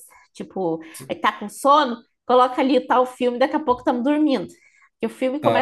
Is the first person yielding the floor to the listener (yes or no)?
no